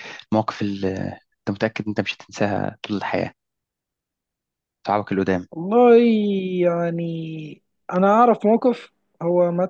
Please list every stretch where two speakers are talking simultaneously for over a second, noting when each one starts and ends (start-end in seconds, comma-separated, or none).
none